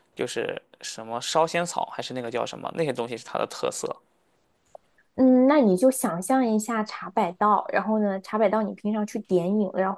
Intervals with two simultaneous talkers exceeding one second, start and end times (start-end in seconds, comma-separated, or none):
none